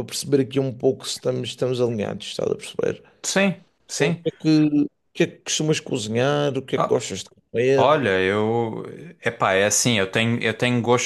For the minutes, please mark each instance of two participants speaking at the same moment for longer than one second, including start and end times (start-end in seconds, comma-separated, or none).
none